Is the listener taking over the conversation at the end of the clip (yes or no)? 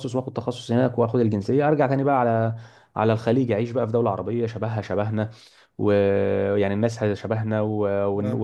no